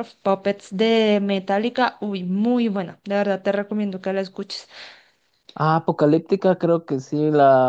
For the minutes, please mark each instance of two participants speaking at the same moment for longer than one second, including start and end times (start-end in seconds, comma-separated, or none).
none